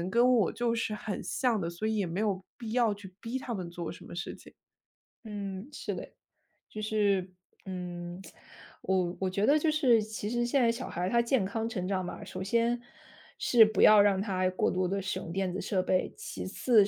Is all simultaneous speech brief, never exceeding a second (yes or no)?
yes